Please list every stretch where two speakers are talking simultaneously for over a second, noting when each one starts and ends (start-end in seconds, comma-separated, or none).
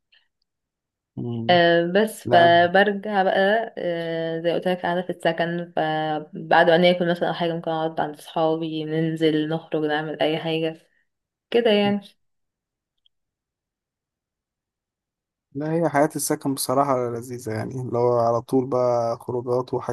none